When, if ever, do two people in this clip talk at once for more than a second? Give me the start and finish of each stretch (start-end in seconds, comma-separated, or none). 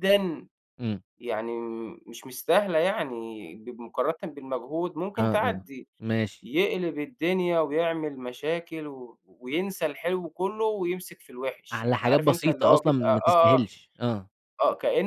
11.7-13.6